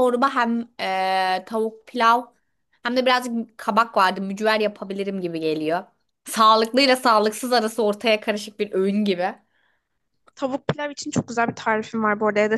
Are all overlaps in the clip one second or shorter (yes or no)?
yes